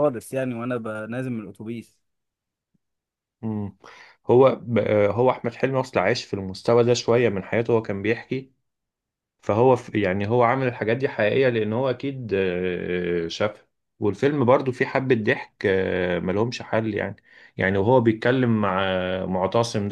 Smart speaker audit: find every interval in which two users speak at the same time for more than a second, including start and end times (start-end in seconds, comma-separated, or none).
none